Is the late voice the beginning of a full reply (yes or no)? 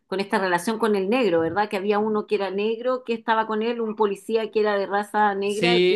yes